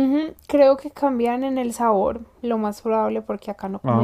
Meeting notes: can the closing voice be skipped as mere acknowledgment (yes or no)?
yes